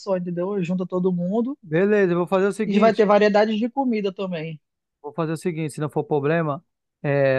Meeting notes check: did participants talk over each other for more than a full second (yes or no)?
no